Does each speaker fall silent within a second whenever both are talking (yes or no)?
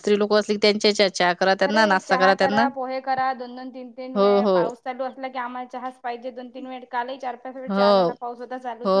yes